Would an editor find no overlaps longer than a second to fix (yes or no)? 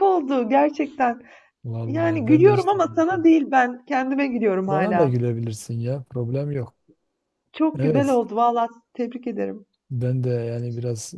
no